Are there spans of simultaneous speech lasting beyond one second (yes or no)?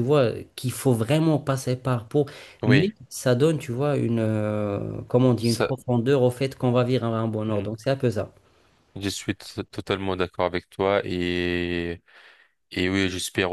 no